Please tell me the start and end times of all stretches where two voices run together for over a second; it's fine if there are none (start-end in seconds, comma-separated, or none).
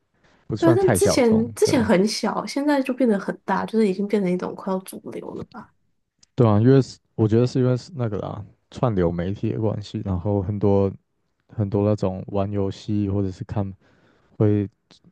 0.6-1.9